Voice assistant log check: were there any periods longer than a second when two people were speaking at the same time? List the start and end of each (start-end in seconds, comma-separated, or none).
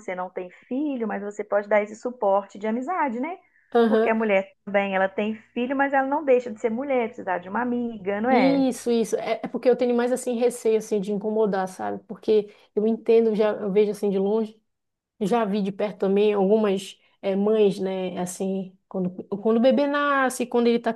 none